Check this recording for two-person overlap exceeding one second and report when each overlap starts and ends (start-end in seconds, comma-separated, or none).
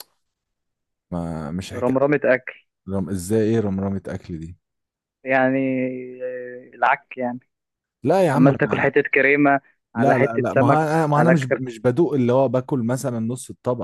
10.0-11.6